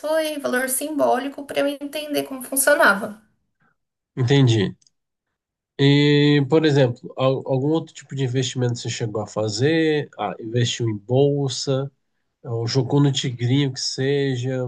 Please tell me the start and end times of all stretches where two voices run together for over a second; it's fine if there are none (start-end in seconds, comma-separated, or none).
none